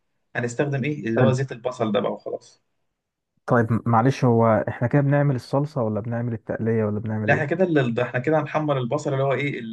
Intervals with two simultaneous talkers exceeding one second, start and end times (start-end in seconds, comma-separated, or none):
none